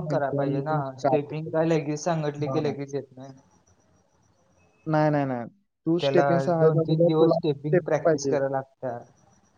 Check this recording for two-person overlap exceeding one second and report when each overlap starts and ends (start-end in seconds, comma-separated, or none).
6.0-8.4